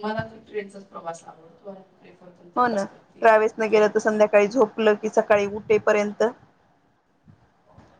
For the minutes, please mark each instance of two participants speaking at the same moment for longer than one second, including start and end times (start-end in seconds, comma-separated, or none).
none